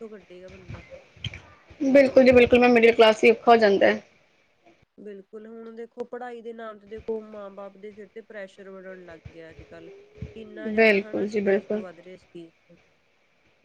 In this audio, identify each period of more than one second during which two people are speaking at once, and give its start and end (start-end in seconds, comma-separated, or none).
10.4-11.8